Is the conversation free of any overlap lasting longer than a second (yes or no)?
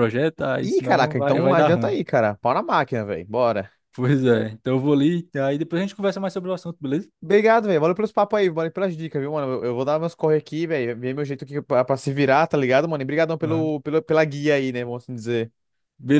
no